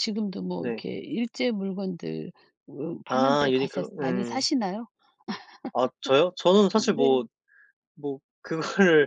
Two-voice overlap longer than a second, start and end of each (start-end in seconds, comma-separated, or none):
3.1-4.4